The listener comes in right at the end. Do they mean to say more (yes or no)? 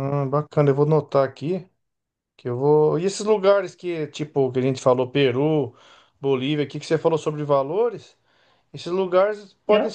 no